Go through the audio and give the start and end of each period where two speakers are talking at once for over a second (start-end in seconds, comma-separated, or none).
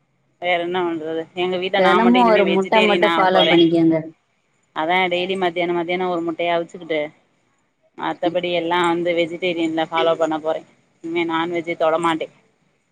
1.8-3.5